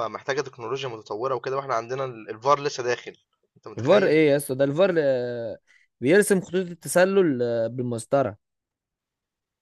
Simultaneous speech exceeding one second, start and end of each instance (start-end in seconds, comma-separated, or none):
none